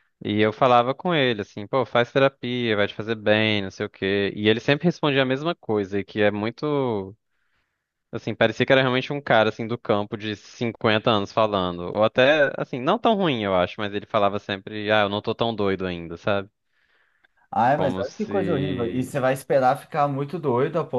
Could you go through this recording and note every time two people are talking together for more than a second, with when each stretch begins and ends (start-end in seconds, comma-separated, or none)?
17.8-19.1